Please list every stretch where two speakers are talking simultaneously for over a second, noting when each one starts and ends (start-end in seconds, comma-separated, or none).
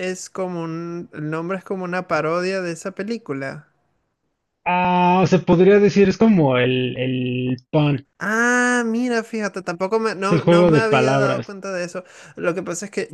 10.2-11.5